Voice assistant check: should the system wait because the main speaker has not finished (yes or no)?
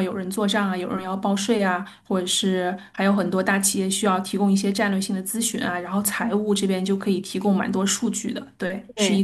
yes